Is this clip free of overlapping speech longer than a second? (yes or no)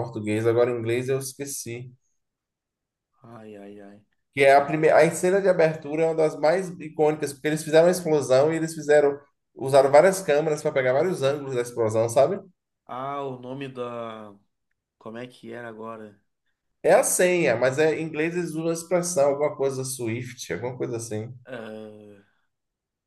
yes